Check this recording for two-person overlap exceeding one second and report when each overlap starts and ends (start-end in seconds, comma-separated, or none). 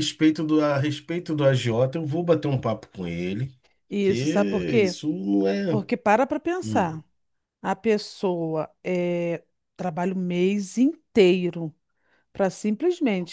none